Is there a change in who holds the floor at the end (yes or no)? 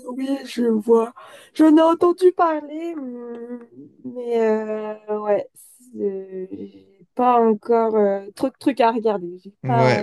yes